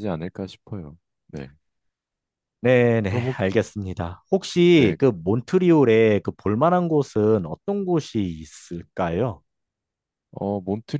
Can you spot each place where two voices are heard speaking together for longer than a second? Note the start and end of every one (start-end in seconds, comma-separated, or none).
none